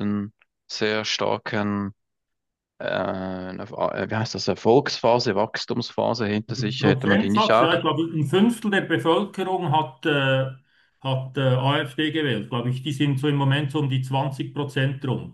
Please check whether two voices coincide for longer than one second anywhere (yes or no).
yes